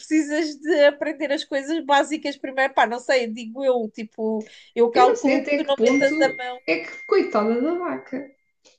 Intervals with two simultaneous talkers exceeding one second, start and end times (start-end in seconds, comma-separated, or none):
4.9-6.1